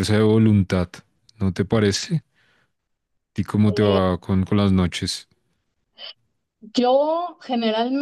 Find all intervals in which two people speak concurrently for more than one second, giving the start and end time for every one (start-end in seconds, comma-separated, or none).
none